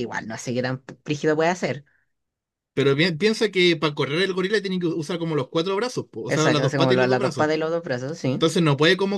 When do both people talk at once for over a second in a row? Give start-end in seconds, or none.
6.3-7.5